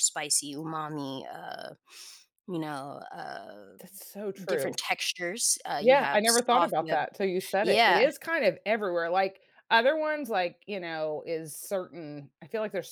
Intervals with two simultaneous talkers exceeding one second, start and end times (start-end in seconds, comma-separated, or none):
5.8-7.0